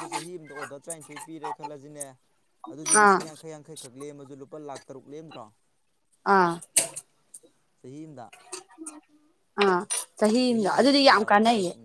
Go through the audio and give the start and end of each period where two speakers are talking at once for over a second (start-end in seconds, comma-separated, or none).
none